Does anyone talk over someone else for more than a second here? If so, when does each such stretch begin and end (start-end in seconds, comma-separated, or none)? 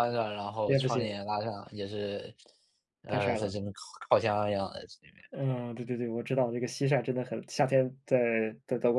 none